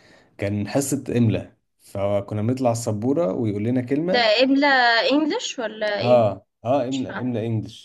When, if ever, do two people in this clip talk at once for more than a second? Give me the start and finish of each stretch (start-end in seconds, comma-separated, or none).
none